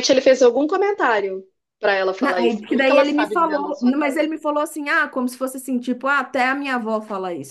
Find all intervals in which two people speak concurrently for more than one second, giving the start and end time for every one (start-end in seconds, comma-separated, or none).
2.2-4.3